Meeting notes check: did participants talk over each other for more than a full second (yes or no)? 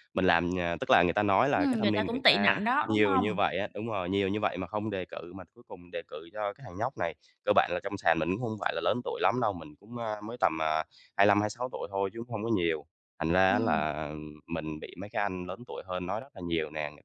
yes